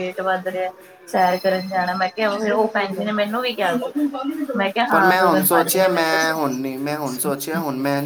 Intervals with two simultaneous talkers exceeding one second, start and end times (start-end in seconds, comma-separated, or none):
4.9-6.4